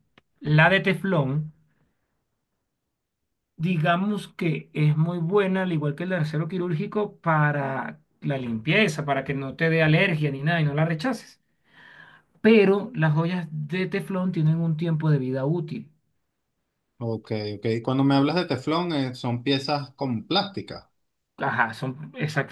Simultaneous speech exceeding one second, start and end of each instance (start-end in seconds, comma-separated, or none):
none